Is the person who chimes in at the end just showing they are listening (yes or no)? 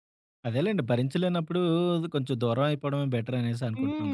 no